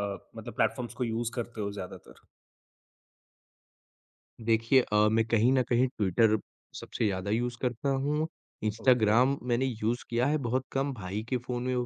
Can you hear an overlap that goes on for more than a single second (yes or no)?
no